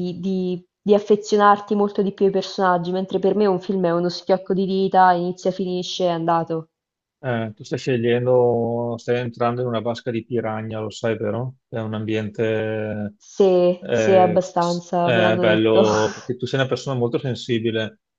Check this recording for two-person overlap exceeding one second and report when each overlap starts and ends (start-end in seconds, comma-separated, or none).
13.8-15.8